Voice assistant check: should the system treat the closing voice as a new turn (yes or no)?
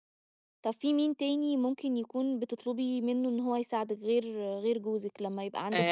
yes